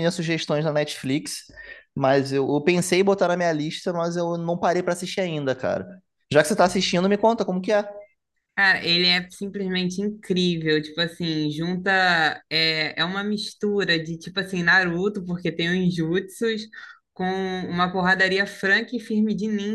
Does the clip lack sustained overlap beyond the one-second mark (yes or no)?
yes